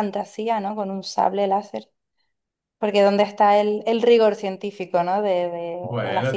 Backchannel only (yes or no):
no